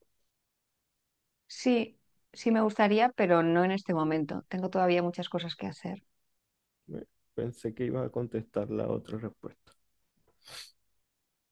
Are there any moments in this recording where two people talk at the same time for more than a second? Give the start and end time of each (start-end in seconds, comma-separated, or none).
none